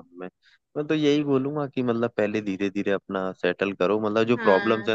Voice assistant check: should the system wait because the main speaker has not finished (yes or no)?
yes